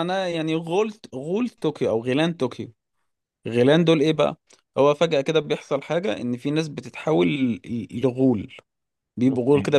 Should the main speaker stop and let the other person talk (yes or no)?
no